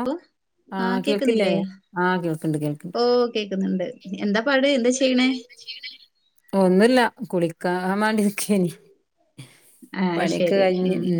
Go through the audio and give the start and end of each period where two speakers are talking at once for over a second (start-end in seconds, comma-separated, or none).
none